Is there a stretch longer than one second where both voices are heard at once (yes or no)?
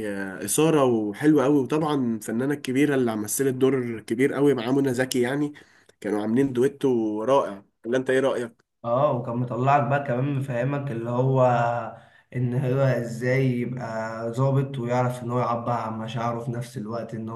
no